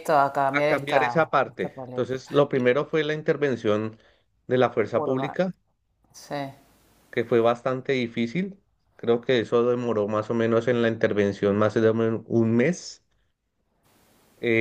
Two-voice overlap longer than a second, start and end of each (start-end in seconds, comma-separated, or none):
0.5-2.6